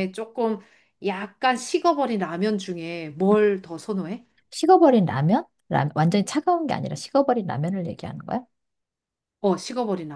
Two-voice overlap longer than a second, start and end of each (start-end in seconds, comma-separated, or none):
none